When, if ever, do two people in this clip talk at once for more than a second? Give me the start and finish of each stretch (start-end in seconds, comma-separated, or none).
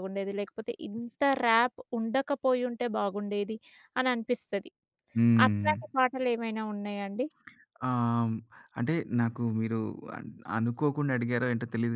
none